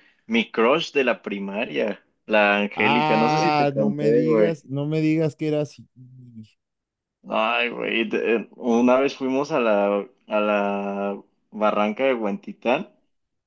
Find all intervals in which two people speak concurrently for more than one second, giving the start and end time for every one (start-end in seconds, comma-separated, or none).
2.8-4.6